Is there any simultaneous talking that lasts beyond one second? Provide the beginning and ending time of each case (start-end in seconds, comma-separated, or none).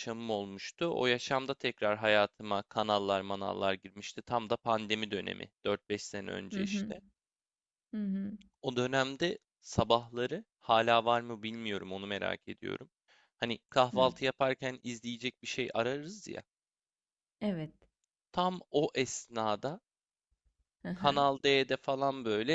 none